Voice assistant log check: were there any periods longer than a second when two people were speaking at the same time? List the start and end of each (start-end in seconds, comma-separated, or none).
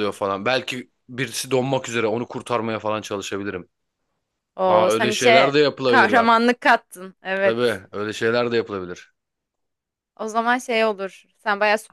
4.7-6.5